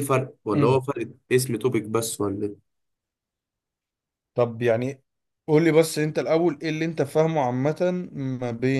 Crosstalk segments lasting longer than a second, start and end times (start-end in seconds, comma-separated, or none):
none